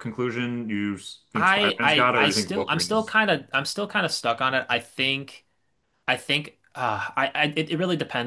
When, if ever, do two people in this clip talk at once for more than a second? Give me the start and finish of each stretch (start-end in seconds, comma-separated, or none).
1.3-3.1